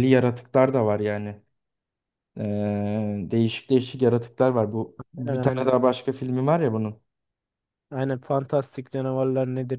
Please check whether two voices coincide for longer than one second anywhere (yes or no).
no